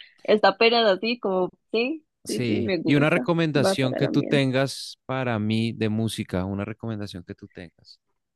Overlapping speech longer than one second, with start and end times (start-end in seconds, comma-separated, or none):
2.2-4.5